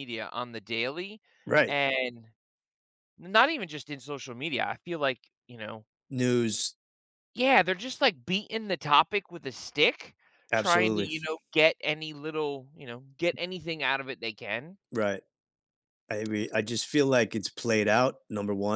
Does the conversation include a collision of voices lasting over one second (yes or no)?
no